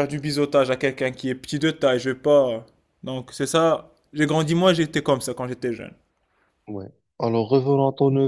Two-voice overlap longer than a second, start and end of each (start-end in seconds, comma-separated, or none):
none